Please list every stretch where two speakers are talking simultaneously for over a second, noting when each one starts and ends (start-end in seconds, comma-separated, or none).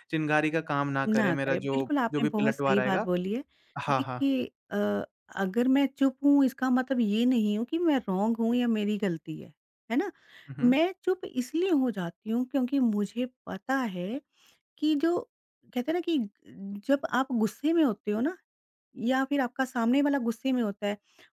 1.2-3.1